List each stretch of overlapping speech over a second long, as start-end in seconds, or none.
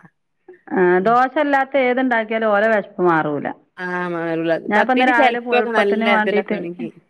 4.7-6.6